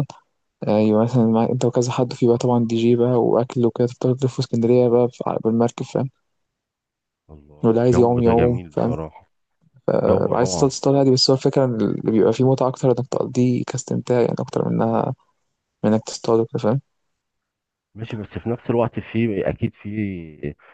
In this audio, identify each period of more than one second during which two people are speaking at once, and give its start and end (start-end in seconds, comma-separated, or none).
7.6-9.0